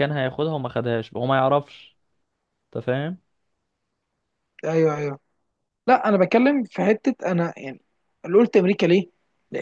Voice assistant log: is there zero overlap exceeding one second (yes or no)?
yes